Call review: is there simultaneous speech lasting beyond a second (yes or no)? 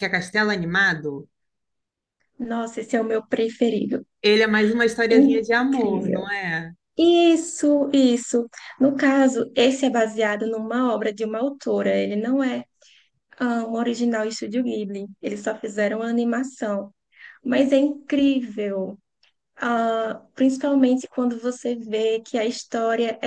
yes